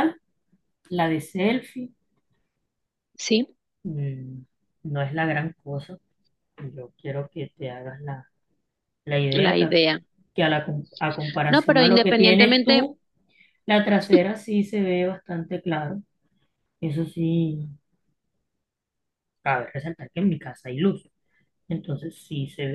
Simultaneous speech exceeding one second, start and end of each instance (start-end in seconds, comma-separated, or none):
11.5-12.8